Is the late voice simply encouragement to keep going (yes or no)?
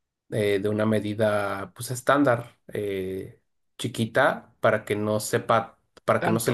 yes